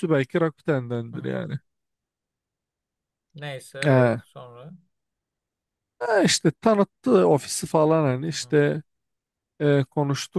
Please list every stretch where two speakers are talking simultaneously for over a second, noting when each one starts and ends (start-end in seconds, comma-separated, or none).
none